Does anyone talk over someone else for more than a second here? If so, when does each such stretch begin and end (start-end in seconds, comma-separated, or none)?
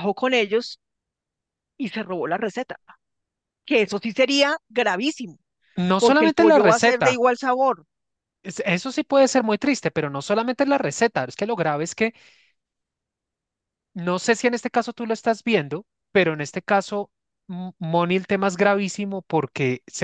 6.0-7.2